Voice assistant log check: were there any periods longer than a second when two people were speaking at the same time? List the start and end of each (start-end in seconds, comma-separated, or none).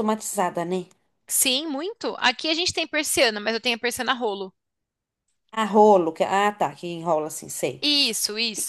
none